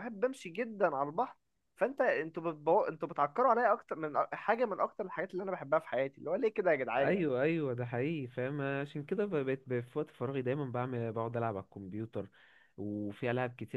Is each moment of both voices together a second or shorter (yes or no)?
yes